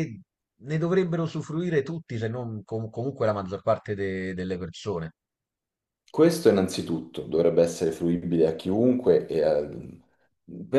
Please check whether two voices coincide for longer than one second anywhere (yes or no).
no